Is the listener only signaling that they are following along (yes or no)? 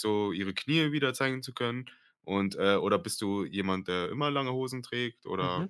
no